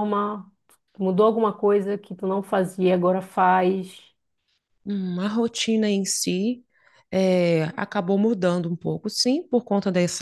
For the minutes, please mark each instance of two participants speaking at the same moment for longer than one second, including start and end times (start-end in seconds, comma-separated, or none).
none